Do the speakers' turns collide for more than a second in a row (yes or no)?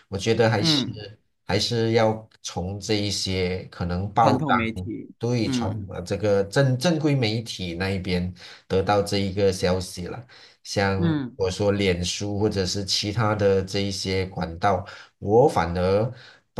yes